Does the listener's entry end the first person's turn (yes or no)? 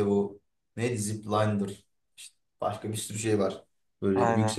no